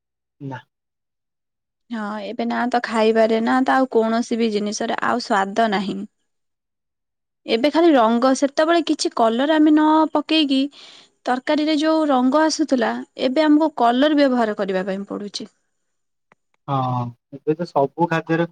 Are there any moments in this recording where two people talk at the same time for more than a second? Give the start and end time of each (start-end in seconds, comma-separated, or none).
none